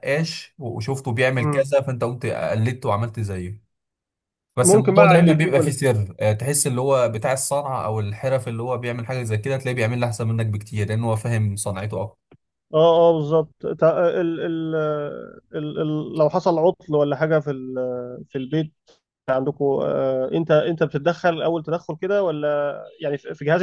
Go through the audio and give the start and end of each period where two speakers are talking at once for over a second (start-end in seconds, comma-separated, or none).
4.6-5.8